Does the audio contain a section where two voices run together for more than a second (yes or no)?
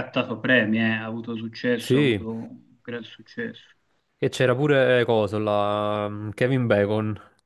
no